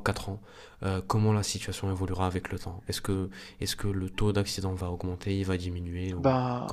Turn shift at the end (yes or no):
yes